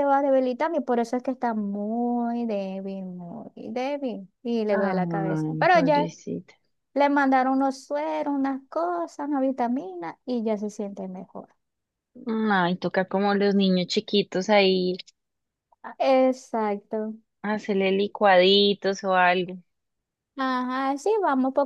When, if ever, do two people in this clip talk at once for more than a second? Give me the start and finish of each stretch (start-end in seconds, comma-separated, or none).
4.7-6.1